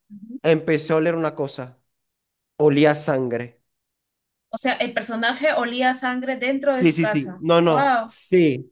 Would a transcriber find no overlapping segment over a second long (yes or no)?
no